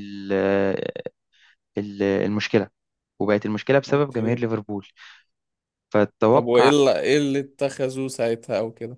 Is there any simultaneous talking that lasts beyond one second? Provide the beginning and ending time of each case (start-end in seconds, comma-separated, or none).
none